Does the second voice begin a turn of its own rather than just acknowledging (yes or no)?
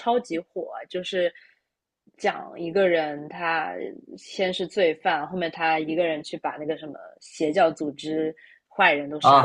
yes